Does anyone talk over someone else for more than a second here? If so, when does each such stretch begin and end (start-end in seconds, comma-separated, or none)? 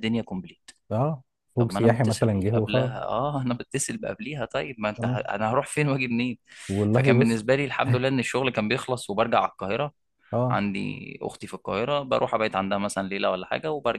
1.6-2.9